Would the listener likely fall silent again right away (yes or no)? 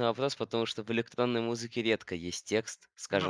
yes